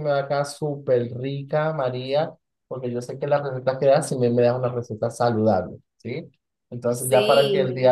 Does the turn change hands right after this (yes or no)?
no